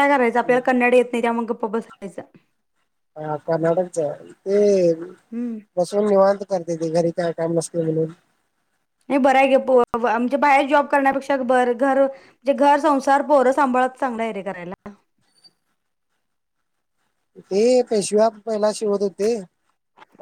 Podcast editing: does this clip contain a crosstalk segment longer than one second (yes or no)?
no